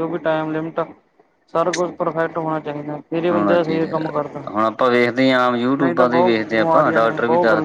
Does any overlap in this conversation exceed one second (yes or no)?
yes